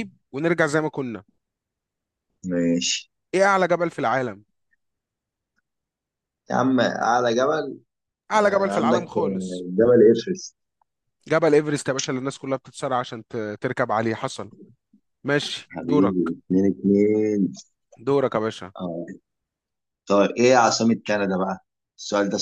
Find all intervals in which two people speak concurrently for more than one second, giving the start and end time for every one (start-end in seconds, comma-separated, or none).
8.3-9.7